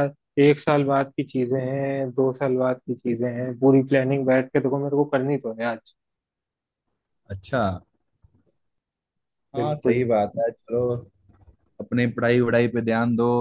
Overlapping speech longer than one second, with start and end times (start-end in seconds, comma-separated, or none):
none